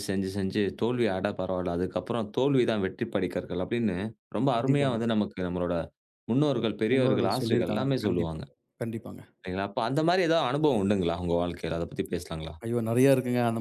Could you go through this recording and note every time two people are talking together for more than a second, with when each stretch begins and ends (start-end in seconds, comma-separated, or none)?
6.9-8.4